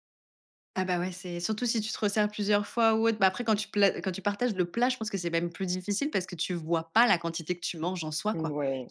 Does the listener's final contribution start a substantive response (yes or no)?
yes